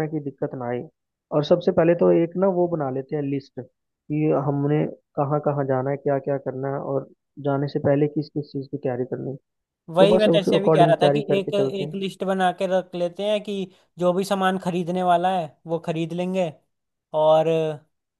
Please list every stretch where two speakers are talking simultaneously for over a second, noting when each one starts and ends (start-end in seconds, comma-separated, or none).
10.0-12.0